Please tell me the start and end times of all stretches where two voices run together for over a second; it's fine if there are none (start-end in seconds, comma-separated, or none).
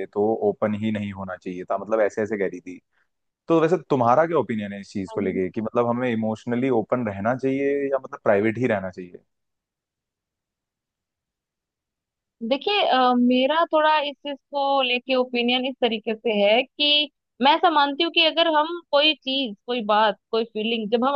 none